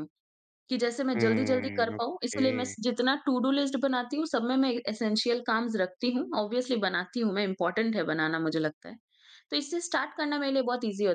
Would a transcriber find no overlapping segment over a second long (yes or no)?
no